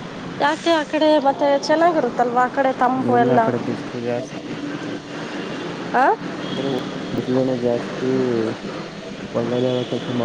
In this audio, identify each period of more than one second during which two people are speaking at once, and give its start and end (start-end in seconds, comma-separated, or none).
none